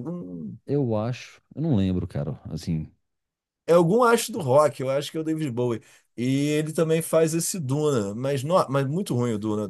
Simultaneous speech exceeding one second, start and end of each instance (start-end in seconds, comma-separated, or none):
none